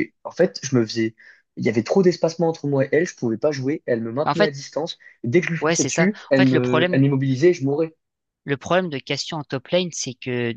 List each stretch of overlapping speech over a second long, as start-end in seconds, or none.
5.6-7.0